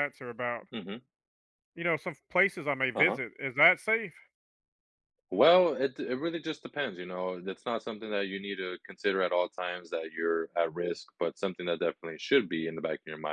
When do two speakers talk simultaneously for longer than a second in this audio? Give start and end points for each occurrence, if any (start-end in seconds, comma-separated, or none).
none